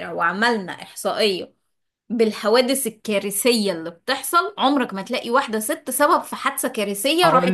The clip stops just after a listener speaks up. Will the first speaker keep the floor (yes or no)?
no